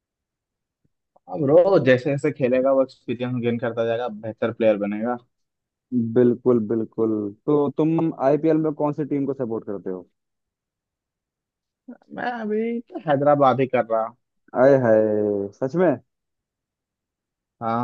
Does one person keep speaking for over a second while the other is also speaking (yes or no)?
no